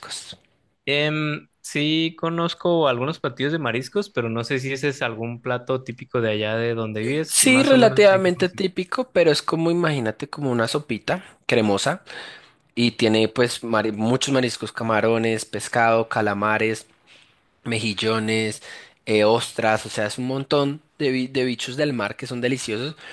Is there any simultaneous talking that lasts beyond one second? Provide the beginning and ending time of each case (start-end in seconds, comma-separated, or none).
7.3-8.7